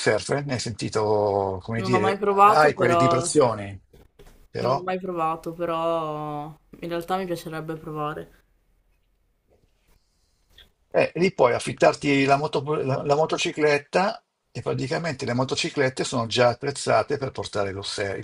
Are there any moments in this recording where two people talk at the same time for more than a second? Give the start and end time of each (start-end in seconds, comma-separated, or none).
1.8-3.3